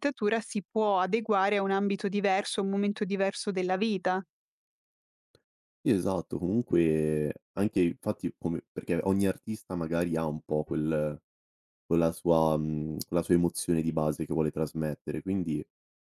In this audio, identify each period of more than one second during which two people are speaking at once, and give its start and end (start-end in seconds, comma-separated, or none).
none